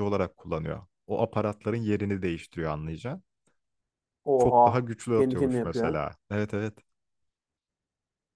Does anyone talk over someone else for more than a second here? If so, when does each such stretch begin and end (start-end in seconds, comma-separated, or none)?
4.4-6.0